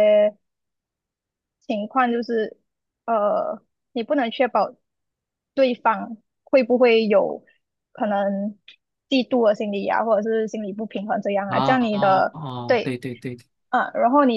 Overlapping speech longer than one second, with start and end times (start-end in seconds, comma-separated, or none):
11.5-13.0